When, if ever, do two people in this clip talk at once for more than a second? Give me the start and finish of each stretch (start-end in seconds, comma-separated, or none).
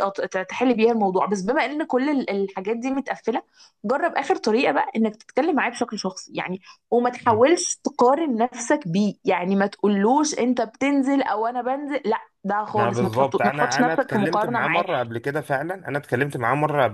12.8-14.8